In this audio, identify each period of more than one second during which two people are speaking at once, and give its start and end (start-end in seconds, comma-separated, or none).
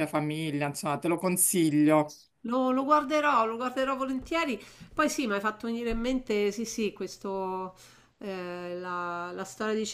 none